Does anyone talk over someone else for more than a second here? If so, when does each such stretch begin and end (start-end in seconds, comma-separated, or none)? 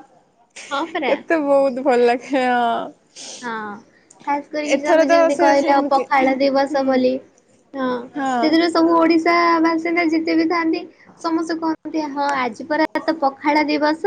4.8-6.9